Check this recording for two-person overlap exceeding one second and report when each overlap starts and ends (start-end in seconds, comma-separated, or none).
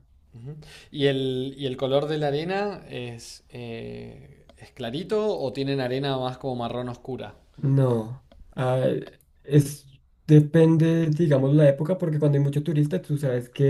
none